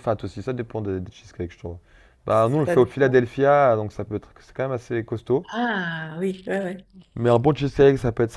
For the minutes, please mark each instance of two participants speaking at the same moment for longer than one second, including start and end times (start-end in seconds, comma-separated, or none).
none